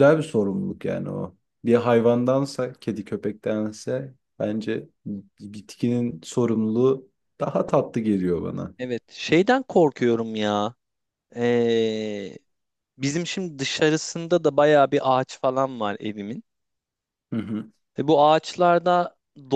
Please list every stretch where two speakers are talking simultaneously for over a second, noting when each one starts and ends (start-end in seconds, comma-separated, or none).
none